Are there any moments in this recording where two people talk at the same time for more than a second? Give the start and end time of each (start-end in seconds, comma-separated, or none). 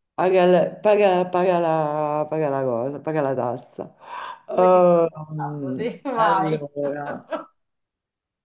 4.5-6.6